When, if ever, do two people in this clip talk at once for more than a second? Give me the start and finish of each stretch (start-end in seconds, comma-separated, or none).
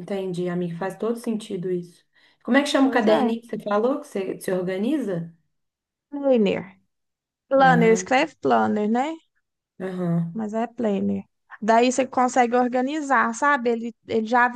none